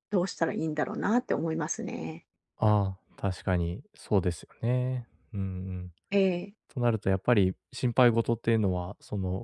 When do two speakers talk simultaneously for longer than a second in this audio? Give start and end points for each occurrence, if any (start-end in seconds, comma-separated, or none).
none